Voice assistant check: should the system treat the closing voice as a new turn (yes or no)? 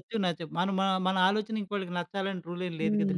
yes